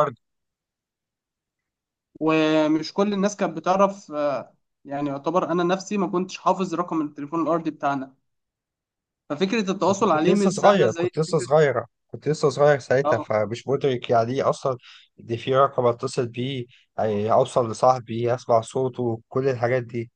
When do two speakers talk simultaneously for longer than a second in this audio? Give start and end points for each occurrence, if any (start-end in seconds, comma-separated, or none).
9.9-11.5